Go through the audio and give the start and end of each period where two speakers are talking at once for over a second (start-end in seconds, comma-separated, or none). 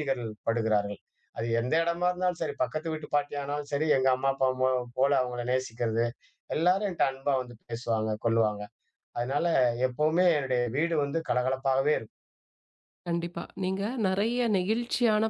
none